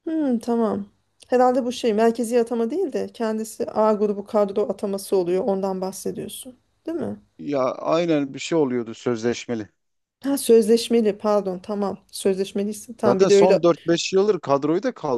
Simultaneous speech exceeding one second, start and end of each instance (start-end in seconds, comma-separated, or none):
none